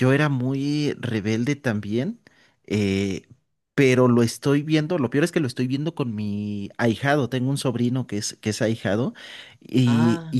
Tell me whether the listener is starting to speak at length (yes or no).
no